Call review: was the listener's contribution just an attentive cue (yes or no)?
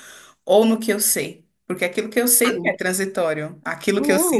no